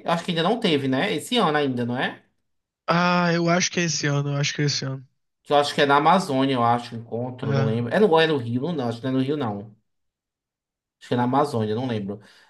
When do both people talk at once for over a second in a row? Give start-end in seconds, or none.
none